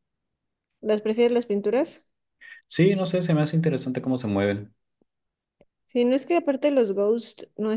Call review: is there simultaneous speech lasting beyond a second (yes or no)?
no